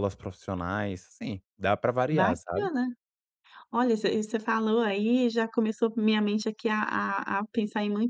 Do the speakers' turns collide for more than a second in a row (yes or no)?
no